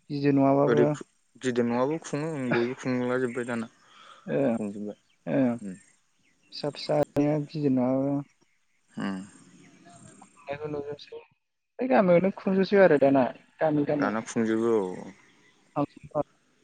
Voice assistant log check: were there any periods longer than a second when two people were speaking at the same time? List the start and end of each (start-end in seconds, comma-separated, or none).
none